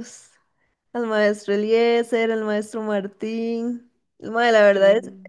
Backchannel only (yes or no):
yes